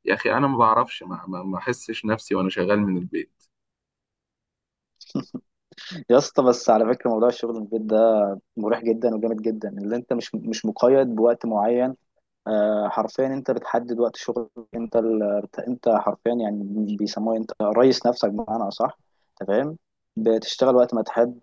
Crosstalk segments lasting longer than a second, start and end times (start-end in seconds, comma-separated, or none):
none